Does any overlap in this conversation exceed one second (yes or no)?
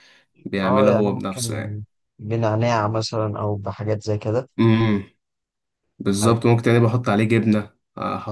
yes